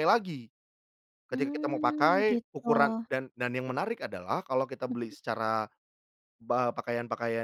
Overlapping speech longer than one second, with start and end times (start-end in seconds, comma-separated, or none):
1.3-3.1